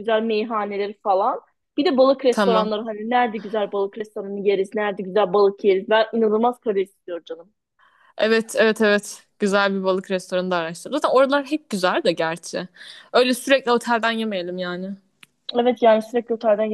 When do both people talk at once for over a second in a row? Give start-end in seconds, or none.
none